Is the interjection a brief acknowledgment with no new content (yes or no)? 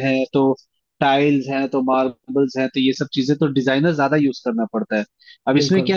yes